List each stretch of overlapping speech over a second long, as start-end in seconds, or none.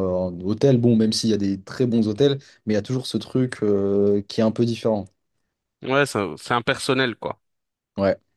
none